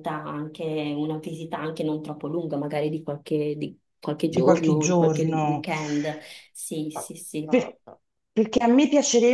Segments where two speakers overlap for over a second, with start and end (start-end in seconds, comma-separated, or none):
4.2-5.7